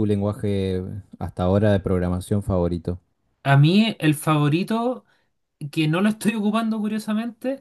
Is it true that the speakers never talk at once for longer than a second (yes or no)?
yes